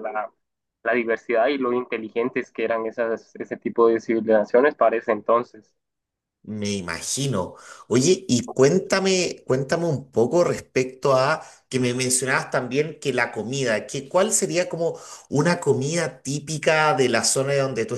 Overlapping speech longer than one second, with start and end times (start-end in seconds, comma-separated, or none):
none